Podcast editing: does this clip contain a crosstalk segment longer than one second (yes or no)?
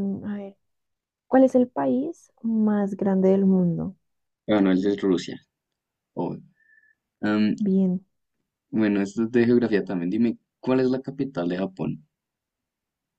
no